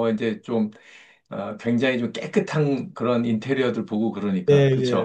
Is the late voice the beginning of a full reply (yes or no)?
yes